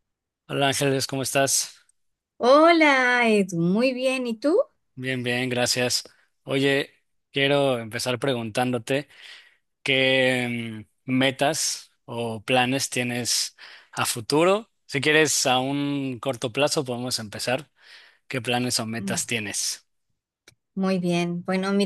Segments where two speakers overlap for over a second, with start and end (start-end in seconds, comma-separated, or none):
none